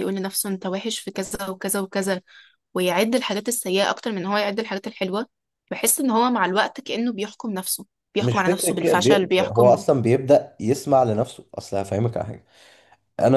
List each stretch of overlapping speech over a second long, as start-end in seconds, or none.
8.2-9.8